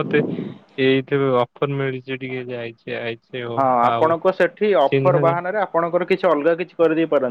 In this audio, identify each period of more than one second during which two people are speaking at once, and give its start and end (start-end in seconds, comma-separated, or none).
none